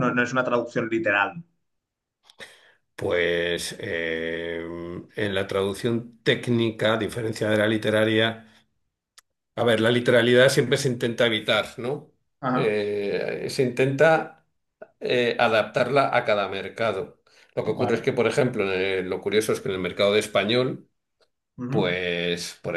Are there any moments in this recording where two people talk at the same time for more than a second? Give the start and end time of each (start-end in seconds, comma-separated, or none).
none